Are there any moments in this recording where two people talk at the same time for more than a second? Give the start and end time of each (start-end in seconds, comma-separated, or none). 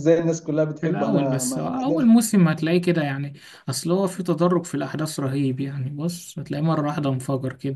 0.8-2.2